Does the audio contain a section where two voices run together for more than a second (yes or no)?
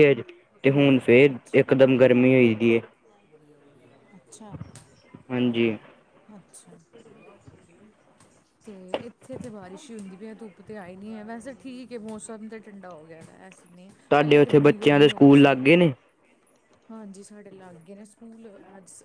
yes